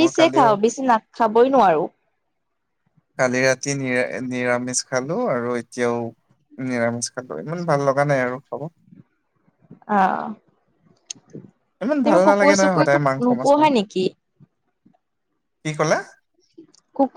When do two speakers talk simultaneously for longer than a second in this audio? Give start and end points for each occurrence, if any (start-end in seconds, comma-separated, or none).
11.8-13.6